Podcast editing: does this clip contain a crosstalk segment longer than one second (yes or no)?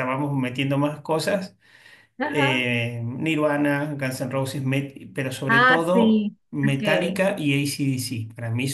yes